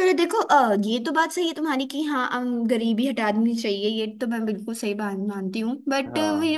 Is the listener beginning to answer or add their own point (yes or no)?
no